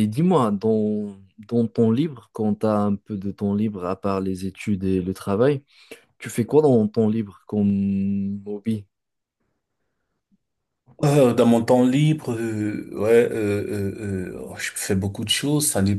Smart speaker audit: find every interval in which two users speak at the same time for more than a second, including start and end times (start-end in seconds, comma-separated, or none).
none